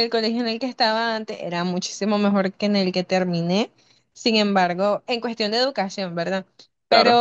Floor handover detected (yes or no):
no